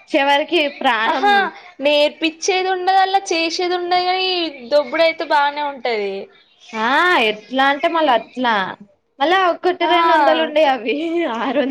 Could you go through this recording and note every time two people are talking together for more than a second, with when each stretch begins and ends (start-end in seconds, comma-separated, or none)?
none